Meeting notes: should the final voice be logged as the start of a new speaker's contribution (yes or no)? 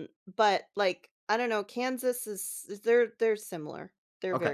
yes